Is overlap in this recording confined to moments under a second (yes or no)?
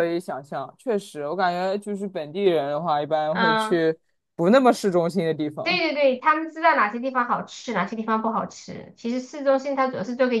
yes